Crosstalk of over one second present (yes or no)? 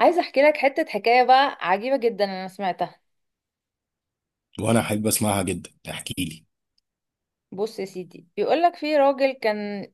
no